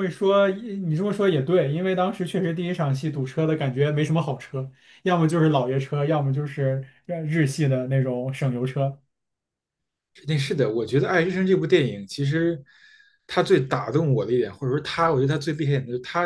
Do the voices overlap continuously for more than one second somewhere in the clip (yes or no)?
no